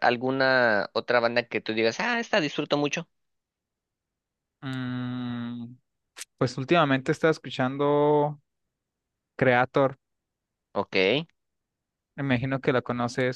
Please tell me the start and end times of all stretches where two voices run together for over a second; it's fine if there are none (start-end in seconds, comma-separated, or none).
none